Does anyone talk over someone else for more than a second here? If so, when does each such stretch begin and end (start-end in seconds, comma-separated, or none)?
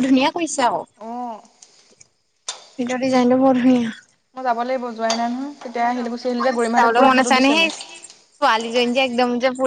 5.8-7.7